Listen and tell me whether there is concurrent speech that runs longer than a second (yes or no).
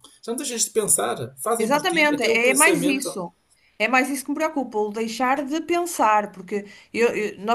yes